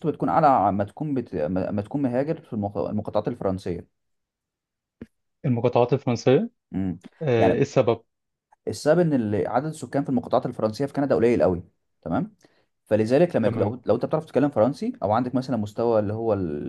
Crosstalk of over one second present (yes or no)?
no